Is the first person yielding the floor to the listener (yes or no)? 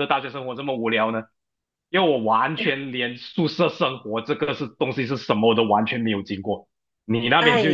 yes